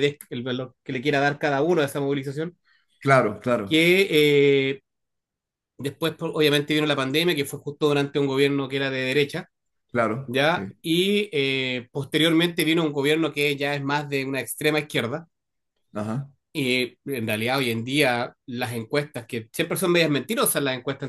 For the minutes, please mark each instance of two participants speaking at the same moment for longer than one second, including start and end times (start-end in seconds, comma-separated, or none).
none